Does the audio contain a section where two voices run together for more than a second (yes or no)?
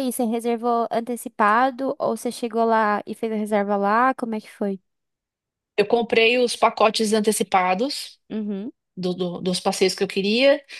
no